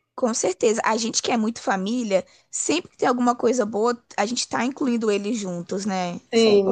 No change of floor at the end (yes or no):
no